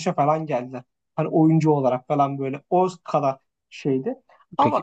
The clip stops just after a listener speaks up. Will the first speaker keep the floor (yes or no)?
yes